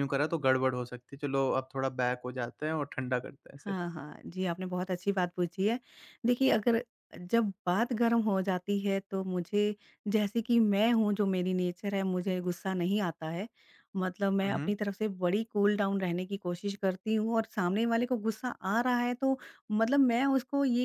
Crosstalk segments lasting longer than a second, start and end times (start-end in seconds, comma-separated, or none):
none